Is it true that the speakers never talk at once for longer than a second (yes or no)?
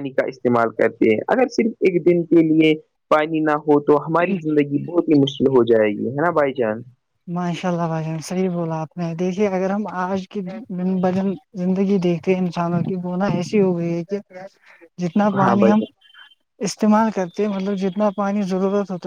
yes